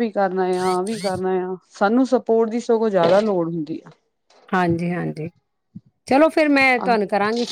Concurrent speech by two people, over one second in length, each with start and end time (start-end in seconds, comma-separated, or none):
none